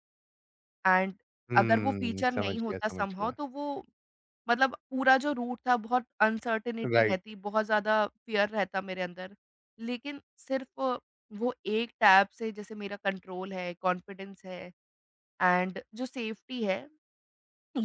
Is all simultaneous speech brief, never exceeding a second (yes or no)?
no